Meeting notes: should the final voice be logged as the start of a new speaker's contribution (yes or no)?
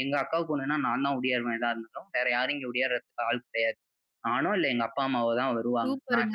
yes